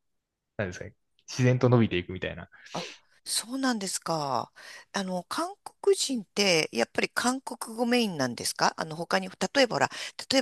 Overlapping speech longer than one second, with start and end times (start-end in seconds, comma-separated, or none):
none